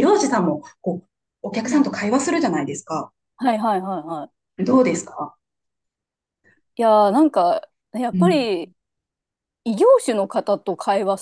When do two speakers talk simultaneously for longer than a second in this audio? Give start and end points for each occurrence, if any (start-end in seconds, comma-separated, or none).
none